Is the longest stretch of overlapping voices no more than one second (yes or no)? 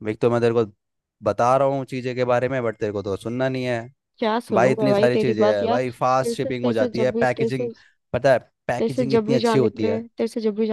no